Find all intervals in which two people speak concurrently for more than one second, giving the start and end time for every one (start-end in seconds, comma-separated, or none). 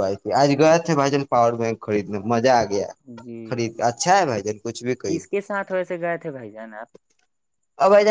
none